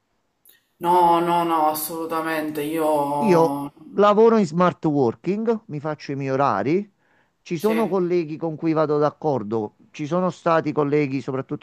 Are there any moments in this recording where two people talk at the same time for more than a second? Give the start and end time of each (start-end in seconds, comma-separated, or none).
none